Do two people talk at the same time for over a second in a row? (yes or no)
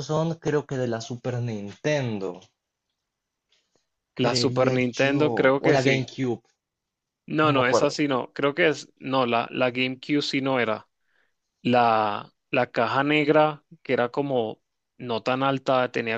yes